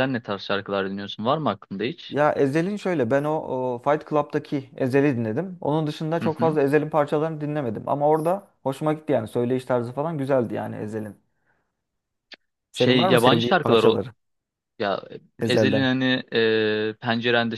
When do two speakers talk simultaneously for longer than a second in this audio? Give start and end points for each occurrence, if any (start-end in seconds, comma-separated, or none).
12.7-14.0